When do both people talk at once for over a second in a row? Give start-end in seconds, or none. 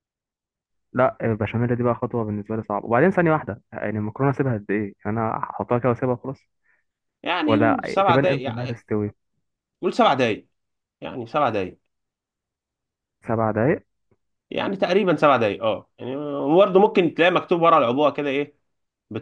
7.5-8.8